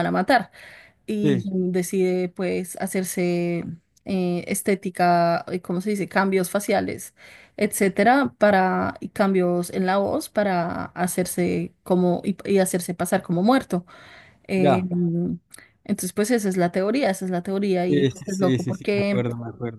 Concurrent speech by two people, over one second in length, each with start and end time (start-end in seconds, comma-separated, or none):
17.9-19.2